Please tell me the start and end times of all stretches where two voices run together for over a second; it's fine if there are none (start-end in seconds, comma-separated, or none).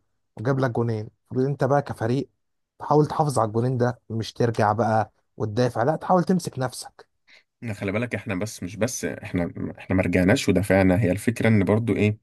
none